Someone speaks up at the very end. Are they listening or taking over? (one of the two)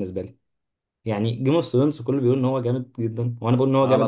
taking over